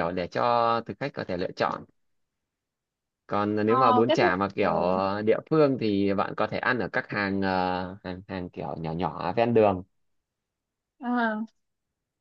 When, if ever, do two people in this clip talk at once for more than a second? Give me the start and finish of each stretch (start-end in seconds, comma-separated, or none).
3.7-5.0